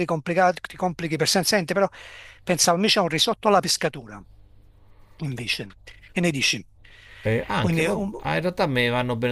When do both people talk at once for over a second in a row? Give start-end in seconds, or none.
none